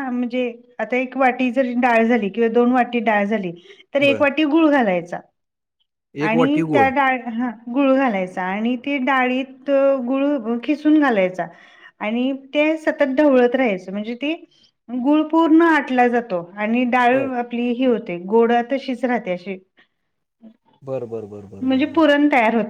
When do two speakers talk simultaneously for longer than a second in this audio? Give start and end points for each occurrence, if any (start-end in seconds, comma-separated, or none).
none